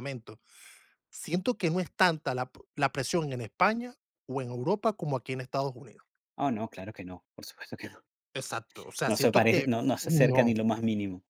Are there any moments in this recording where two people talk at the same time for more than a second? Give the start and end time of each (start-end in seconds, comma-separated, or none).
9.1-10.5